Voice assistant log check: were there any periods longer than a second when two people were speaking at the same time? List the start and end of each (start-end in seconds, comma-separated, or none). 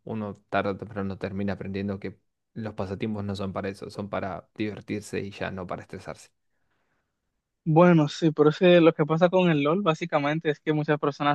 none